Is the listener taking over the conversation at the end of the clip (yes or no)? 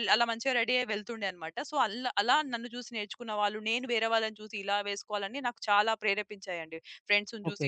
no